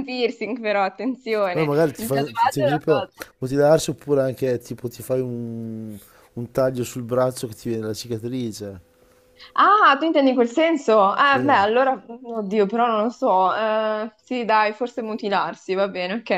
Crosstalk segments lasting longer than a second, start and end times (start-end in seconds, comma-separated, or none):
1.5-3.2